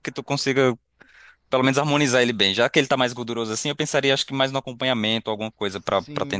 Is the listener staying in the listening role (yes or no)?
no